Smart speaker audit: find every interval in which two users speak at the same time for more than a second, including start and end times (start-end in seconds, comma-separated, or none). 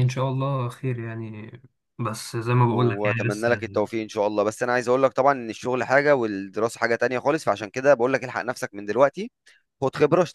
2.7-3.9